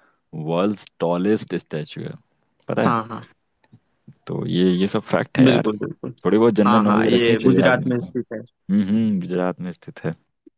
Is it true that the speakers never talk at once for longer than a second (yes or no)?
no